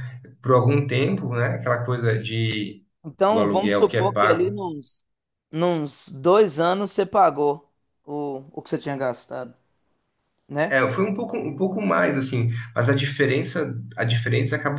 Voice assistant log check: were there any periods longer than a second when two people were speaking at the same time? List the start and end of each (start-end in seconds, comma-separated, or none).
3.3-4.6